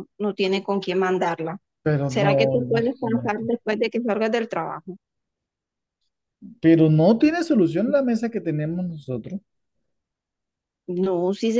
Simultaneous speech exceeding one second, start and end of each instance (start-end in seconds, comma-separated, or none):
2.0-3.4